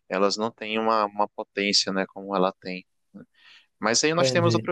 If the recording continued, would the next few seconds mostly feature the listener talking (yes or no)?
no